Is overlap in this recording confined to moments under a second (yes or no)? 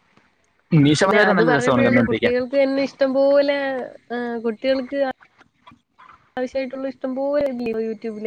no